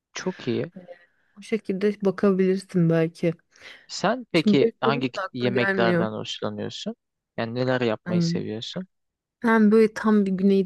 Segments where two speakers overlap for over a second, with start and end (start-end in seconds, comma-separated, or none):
4.3-6.1